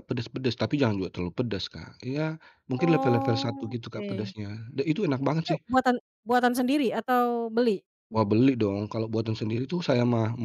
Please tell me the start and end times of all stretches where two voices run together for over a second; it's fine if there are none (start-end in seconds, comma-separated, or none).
2.8-4.3